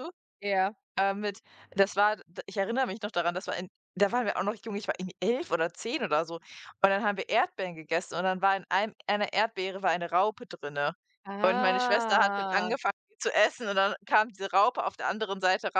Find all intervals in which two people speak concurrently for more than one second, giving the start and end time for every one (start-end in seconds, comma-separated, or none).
11.4-12.7